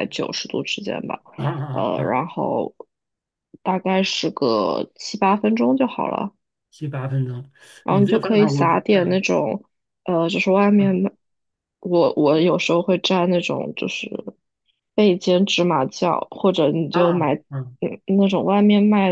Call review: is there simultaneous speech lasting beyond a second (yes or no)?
yes